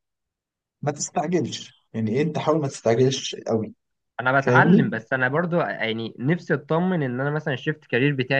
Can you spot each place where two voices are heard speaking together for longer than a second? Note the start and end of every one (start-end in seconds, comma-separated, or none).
none